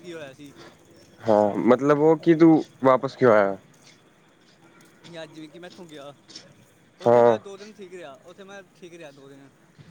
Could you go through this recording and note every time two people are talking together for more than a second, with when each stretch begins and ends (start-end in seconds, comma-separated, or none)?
none